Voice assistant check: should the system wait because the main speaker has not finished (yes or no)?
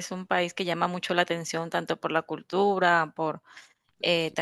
no